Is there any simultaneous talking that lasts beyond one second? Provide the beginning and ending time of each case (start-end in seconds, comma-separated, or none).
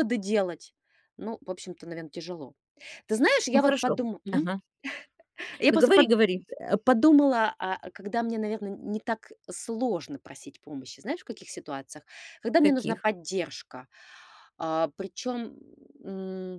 none